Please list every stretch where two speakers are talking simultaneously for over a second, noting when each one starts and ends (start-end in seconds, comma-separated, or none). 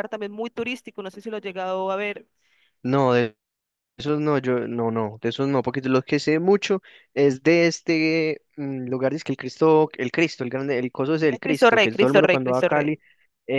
11.3-12.9